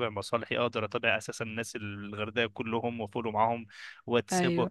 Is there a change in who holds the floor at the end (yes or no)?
no